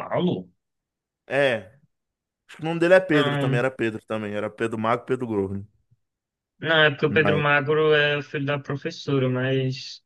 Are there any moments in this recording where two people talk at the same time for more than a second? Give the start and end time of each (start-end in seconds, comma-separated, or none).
none